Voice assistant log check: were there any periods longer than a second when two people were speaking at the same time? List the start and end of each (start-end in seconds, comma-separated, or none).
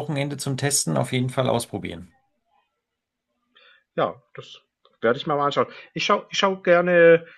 none